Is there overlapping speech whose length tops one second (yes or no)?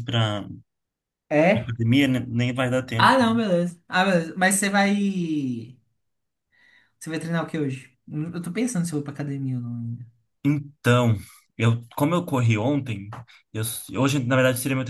no